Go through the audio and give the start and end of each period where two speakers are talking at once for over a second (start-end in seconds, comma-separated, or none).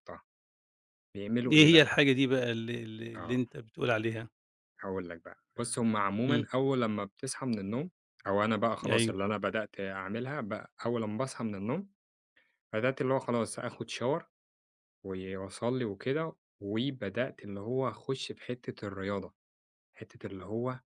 none